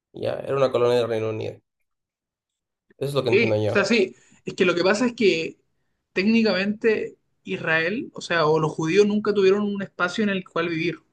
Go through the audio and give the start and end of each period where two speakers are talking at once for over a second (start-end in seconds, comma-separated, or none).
none